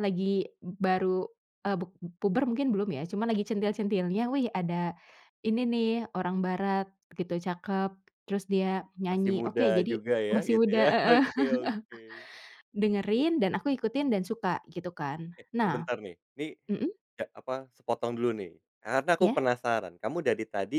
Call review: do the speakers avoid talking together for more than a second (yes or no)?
no